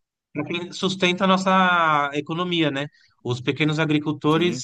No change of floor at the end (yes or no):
yes